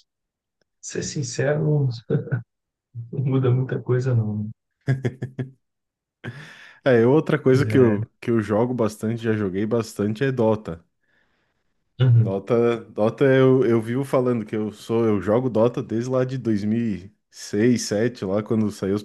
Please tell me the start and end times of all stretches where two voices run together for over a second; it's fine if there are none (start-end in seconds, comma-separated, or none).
none